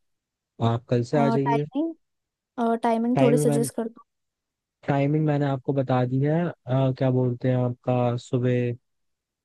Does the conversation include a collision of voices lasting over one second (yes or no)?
no